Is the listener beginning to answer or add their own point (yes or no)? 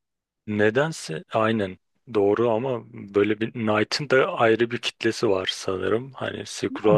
yes